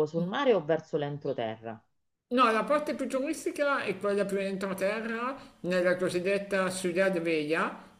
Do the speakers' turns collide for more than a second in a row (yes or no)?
no